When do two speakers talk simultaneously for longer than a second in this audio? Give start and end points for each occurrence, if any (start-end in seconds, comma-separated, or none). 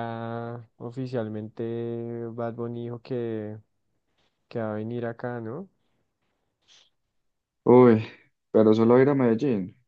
none